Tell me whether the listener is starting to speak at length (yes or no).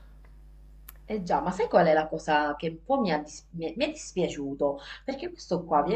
no